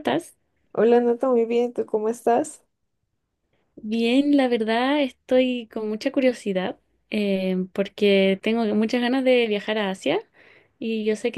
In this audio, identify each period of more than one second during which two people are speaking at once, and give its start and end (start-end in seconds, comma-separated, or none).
none